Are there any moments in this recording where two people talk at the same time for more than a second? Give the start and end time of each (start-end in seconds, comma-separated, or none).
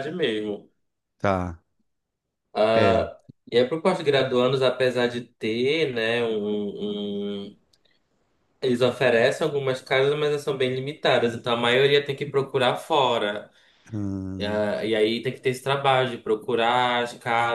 none